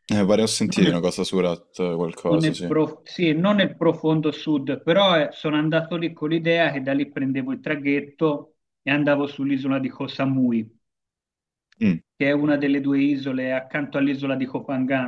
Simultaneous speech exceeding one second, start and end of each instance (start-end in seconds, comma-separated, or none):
none